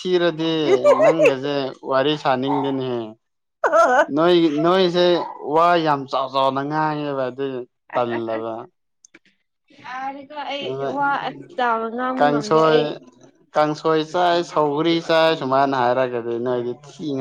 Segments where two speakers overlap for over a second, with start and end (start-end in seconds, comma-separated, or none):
none